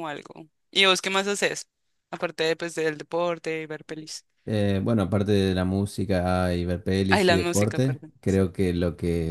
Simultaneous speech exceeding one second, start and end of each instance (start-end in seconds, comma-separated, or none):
7.1-8.5